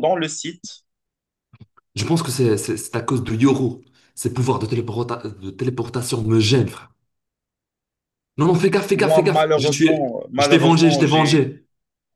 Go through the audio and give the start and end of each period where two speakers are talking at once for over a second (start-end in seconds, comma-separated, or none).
8.9-11.5